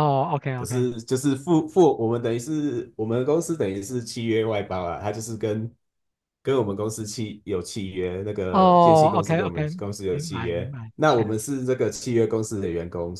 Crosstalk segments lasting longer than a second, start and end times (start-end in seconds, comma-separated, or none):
8.5-11.4